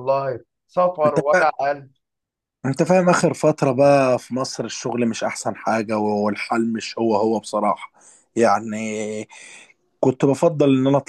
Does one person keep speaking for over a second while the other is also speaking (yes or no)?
no